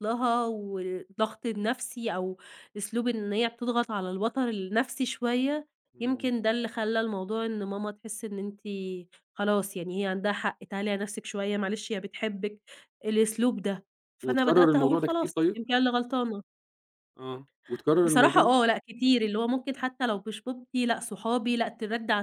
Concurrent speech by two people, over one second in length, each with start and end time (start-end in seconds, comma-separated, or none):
14.2-15.6